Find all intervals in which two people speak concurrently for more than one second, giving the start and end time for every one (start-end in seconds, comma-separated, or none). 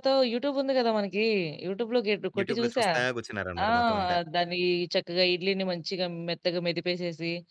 none